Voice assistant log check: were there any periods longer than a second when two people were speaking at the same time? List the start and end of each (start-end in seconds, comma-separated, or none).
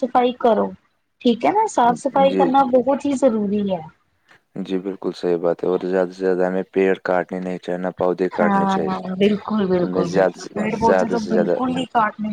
9.8-11.6